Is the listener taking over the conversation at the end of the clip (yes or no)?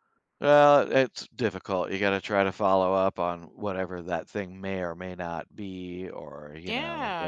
yes